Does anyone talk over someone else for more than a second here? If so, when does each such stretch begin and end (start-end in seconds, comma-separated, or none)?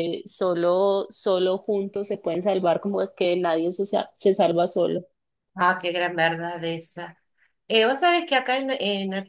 none